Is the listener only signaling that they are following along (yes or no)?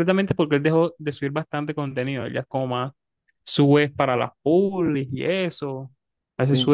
yes